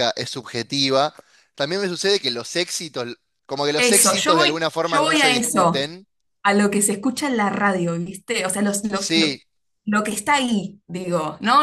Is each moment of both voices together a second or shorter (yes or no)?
no